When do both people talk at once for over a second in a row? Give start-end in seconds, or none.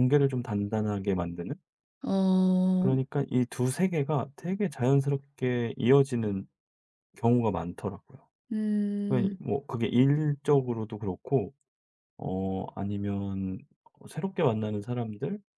none